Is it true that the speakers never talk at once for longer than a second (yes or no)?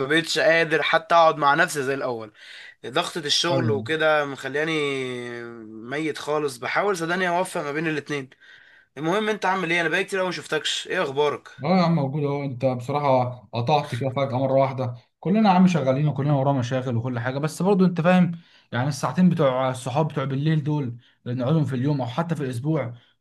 yes